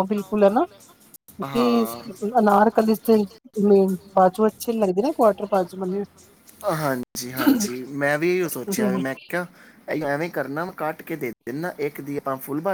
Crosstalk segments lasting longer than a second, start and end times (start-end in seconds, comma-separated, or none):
none